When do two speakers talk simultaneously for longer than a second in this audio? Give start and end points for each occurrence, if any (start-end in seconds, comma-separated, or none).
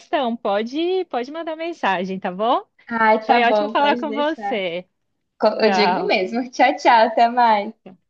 3.2-4.6